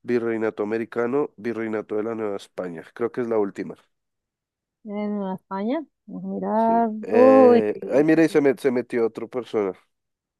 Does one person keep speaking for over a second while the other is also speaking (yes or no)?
yes